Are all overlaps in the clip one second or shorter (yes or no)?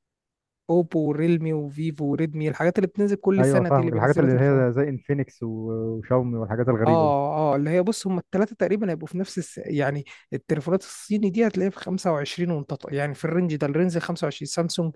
no